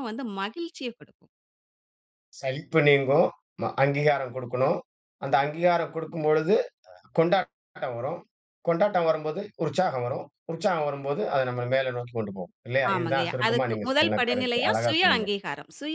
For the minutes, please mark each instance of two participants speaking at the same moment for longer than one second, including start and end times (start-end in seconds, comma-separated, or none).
12.9-15.3